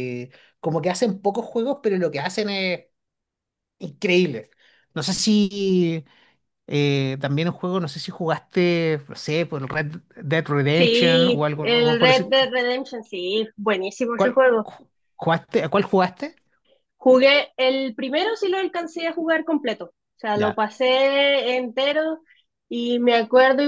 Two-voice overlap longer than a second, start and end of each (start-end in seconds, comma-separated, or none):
10.7-12.3